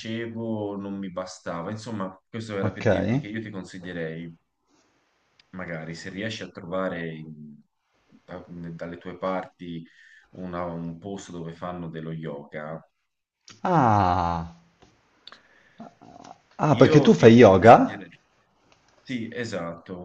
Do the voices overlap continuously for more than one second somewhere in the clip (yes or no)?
yes